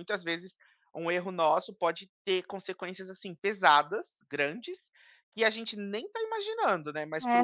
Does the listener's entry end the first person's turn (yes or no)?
yes